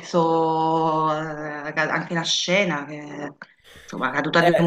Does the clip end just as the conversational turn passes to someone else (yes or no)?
yes